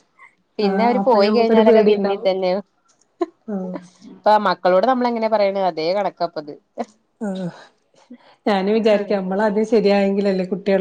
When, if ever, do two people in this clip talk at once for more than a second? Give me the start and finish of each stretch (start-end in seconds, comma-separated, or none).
0.7-2.3